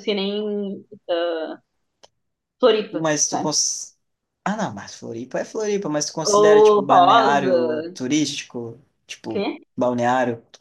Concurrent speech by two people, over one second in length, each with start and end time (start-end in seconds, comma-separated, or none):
6.4-7.6